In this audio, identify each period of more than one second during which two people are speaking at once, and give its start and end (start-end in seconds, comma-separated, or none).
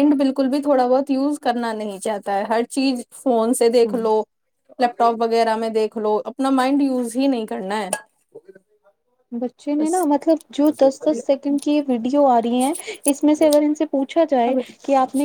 none